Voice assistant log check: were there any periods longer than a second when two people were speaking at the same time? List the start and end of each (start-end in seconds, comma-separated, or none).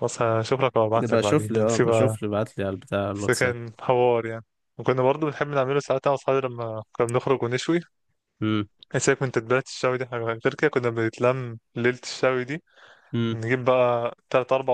0.9-2.2